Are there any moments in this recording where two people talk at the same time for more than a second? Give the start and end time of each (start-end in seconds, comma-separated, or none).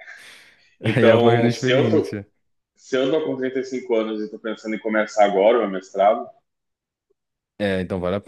1.0-2.2